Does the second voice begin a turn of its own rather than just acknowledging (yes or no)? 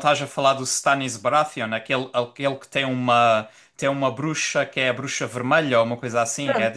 yes